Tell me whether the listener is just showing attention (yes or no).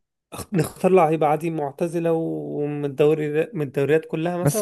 no